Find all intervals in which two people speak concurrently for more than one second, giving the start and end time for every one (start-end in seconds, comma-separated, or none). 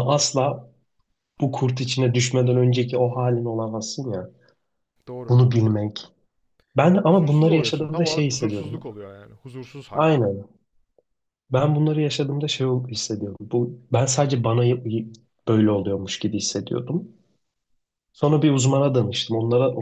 7.1-8.8